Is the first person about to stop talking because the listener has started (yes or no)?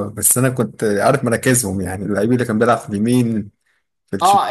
yes